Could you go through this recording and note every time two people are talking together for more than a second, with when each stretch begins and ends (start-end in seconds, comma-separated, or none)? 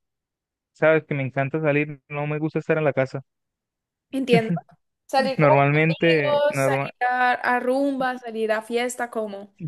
5.3-6.9